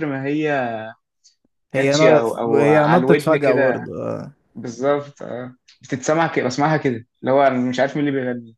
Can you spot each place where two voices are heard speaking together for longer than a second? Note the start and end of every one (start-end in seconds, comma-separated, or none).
1.7-3.9